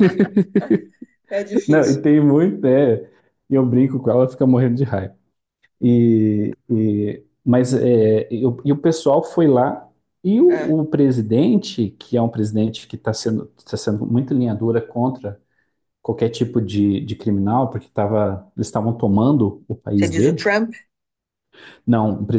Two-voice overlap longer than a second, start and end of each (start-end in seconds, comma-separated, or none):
none